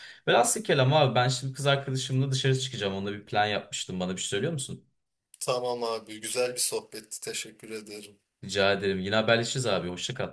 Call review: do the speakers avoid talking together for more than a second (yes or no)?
yes